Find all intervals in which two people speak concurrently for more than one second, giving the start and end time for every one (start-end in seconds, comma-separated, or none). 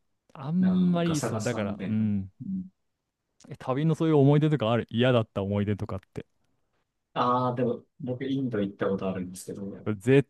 0.6-2.0